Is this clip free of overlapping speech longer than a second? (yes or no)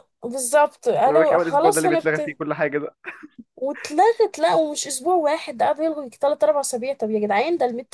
no